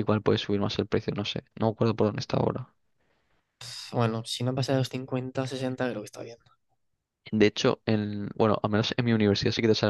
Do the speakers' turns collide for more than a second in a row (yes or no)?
no